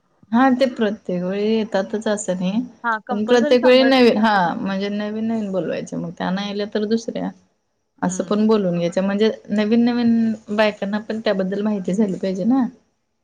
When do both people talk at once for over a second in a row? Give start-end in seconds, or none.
3.1-4.8